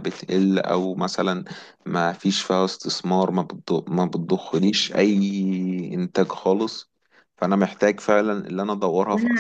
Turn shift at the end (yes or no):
yes